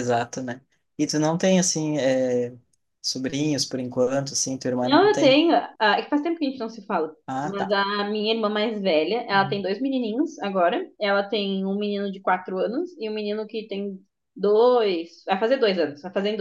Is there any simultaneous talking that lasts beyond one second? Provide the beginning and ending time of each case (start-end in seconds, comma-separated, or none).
none